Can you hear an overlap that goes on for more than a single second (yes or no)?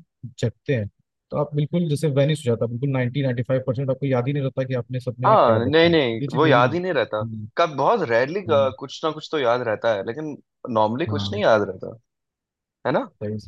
yes